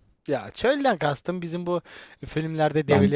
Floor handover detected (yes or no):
no